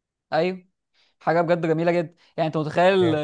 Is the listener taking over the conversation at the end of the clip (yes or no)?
no